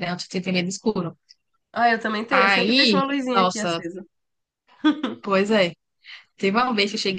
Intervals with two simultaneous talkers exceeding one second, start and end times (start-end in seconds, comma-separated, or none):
2.3-3.8